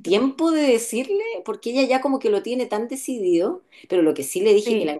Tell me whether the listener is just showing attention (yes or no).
yes